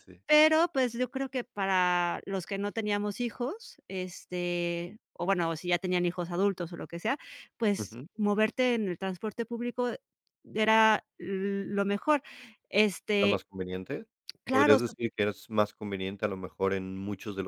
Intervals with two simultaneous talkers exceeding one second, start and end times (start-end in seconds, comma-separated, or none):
none